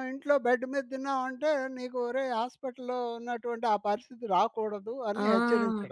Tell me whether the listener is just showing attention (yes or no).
no